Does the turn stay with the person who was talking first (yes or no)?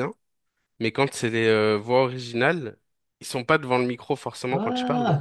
no